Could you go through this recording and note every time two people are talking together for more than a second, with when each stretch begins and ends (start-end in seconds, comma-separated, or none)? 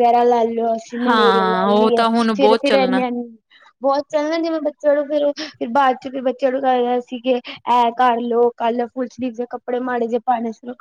1.1-3.0